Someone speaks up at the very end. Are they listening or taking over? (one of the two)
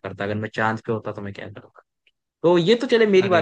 listening